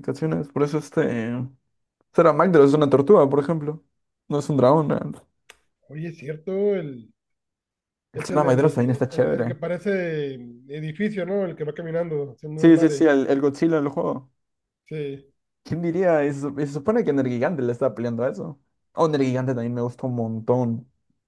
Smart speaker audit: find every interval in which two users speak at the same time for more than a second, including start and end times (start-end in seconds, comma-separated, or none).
8.1-9.6